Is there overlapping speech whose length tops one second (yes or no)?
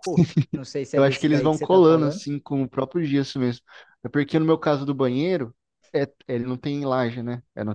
yes